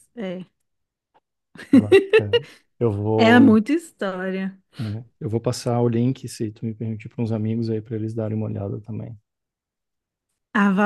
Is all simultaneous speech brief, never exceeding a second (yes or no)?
yes